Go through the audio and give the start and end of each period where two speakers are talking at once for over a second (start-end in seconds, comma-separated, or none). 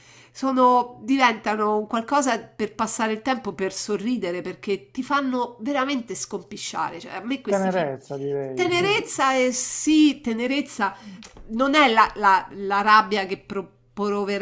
none